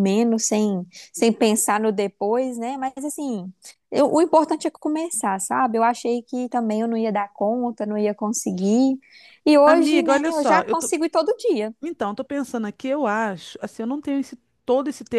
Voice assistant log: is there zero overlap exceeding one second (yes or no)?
no